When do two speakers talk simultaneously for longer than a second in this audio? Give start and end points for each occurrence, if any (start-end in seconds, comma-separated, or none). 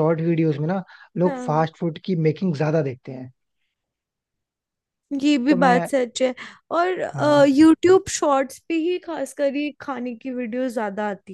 none